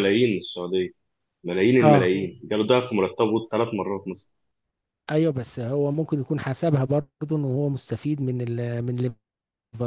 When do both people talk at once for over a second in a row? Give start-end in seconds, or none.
none